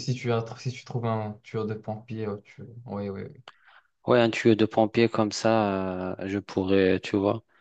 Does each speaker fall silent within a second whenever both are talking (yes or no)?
yes